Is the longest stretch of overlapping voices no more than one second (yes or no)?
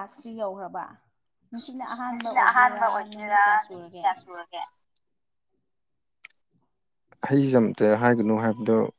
no